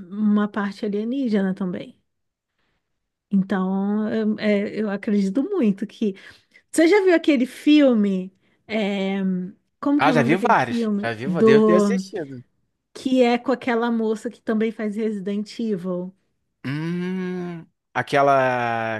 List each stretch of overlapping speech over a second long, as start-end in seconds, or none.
10.0-12.0